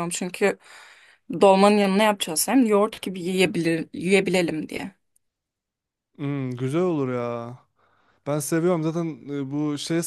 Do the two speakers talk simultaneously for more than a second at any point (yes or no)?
no